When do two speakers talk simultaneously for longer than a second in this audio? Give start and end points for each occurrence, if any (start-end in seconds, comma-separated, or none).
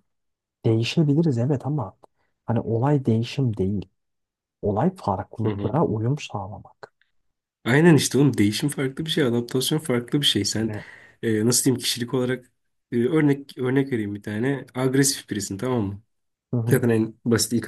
none